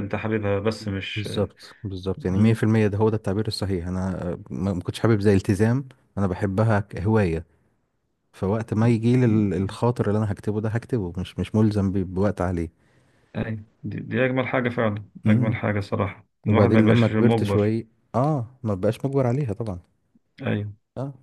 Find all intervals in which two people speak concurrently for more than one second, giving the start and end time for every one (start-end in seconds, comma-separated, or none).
16.5-17.8